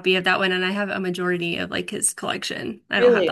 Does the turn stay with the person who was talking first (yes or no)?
no